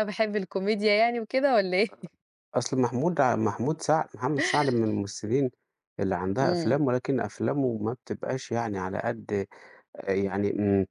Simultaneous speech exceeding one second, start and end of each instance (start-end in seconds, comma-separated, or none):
none